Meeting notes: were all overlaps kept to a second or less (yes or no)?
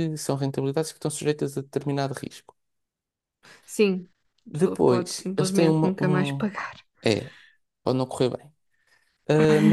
no